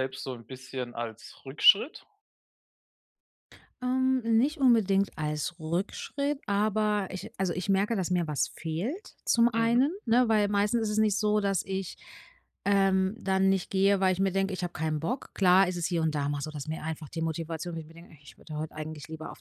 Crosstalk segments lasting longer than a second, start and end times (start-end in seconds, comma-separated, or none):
none